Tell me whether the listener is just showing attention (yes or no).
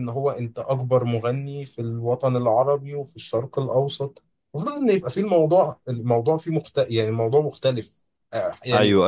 no